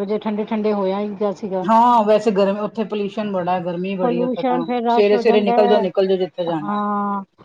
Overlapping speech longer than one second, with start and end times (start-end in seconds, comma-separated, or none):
4.0-5.5